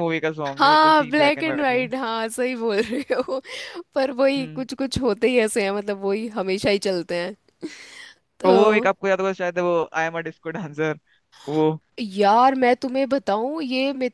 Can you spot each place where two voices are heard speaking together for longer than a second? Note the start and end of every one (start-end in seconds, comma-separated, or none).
0.6-1.9